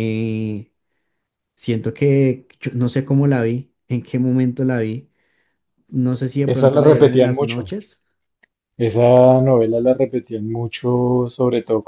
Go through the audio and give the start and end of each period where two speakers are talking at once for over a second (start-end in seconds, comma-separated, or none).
6.5-7.7